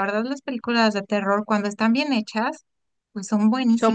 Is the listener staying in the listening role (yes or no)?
no